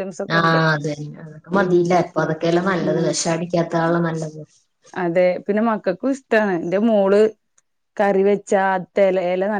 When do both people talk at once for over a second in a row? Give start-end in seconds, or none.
none